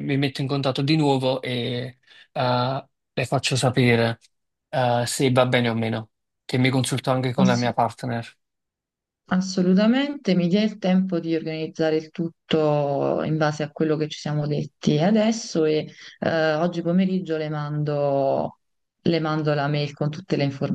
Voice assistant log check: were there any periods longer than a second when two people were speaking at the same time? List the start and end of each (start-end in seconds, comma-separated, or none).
none